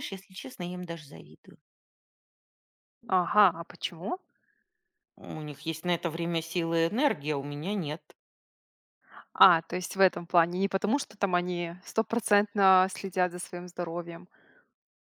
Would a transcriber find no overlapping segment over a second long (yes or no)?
yes